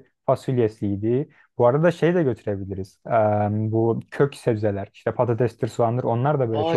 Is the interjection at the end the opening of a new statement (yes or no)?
yes